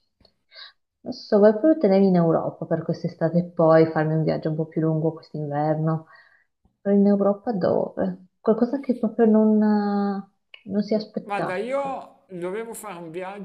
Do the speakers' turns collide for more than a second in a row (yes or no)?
no